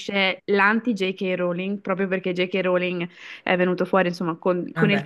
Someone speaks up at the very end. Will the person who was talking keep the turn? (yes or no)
yes